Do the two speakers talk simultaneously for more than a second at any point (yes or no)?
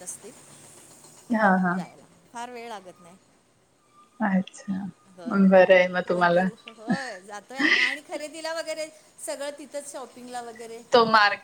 yes